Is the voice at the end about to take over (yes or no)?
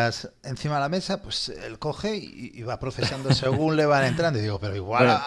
no